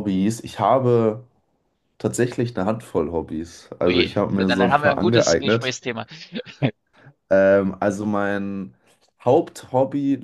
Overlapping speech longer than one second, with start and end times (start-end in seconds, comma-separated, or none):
3.8-5.8